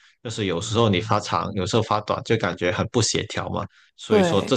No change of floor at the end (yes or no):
yes